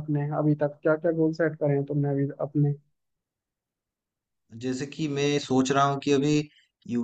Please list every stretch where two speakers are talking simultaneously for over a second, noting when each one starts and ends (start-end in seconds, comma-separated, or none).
none